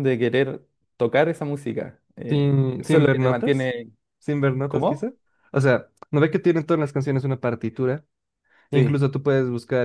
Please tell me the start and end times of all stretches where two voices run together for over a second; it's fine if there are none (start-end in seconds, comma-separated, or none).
2.3-3.7